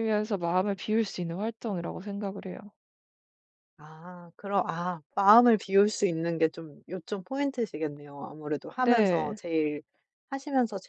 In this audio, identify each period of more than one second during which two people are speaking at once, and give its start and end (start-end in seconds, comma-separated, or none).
none